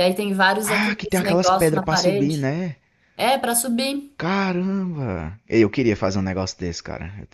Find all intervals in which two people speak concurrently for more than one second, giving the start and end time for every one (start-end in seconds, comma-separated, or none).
0.6-2.5